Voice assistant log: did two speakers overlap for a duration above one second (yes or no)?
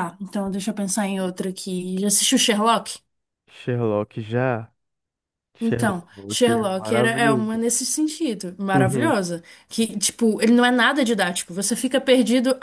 yes